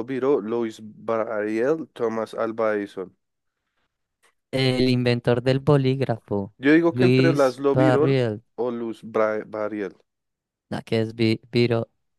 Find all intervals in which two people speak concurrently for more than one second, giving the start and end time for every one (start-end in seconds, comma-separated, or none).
6.9-8.2